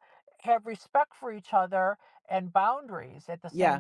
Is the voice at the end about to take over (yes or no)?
yes